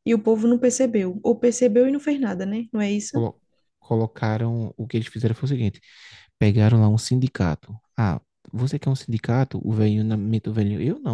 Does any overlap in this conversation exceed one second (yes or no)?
no